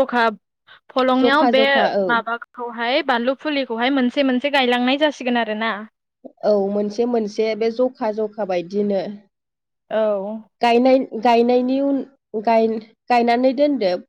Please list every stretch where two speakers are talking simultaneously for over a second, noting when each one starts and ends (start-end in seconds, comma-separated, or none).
none